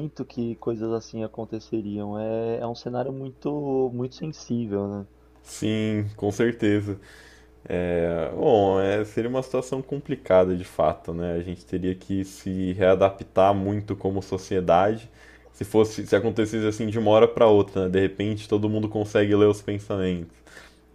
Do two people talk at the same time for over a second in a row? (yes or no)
no